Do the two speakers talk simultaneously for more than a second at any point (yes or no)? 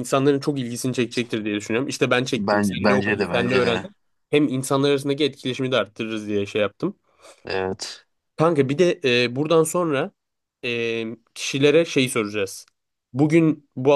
yes